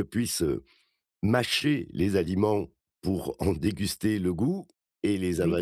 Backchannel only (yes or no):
yes